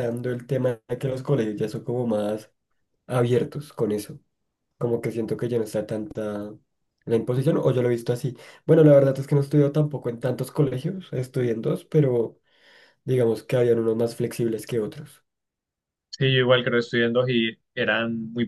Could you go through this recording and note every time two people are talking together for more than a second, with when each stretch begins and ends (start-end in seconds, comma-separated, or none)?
none